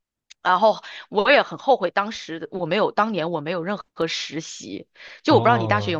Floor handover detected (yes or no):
yes